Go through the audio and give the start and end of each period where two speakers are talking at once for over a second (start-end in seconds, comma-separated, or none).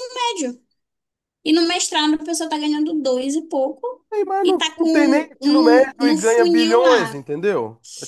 4.4-7.2